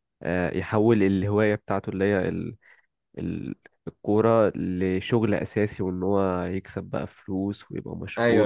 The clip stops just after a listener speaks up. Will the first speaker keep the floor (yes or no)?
no